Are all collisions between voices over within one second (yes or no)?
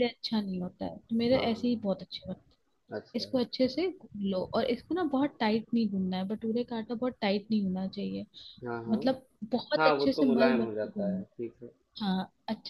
no